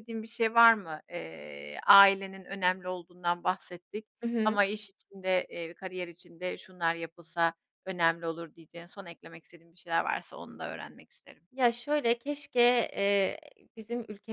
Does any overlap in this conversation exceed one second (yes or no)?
no